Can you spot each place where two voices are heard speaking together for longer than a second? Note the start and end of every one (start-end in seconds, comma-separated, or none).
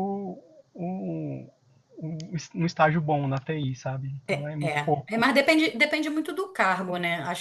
none